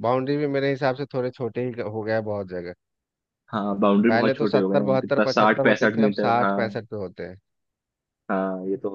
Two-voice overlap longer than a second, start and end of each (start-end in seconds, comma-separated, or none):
4.1-6.8